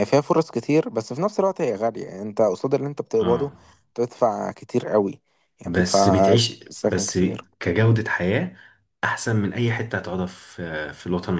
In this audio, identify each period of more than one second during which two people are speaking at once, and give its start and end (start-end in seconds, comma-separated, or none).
5.6-7.2